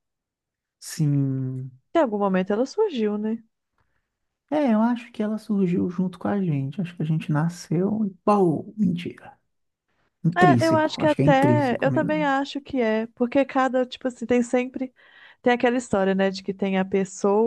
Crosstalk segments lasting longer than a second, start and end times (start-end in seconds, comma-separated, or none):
10.3-12.3